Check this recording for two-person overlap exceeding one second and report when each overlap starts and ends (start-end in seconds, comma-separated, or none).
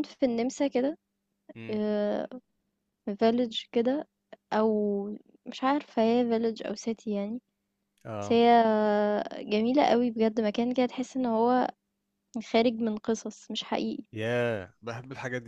none